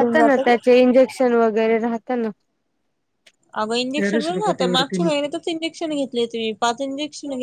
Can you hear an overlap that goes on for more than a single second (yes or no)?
no